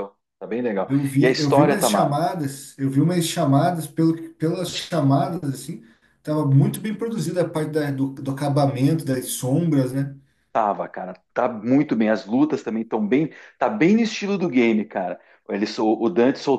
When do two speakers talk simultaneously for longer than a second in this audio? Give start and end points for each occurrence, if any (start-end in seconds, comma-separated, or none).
0.8-2.3